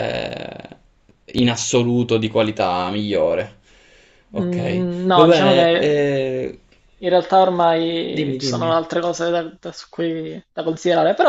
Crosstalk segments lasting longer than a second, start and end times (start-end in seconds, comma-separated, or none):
4.4-6.1